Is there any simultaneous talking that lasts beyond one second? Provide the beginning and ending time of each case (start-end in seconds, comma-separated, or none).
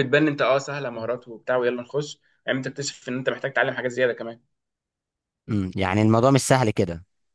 none